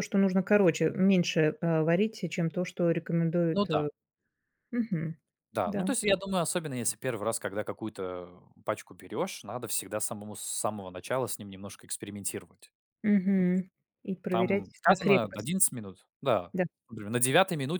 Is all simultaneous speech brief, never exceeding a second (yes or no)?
no